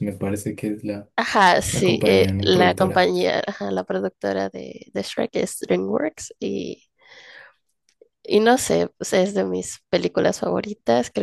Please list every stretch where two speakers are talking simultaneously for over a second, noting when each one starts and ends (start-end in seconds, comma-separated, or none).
1.7-3.1